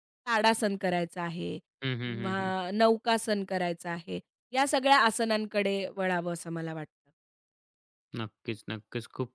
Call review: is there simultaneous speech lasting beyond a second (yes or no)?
no